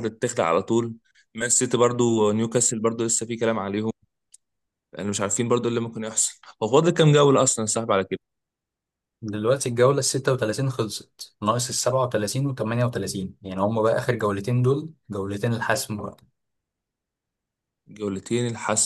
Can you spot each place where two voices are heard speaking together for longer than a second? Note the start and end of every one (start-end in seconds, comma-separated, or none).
none